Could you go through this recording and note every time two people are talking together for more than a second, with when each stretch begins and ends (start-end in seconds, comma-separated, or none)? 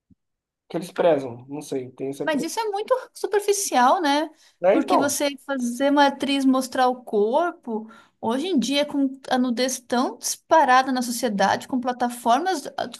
none